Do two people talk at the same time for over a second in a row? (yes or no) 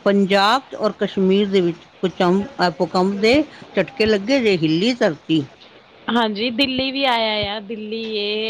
no